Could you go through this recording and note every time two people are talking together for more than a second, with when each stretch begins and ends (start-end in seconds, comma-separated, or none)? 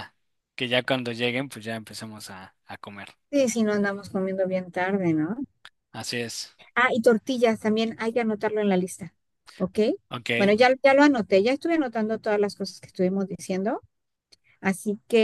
none